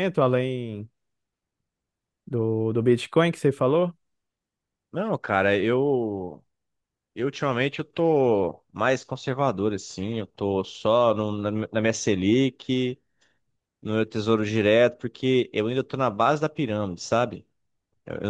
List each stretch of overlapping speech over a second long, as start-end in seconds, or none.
none